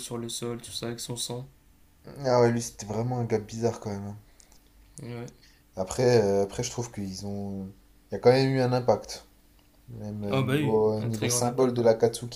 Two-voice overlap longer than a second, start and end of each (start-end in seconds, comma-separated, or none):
10.3-11.8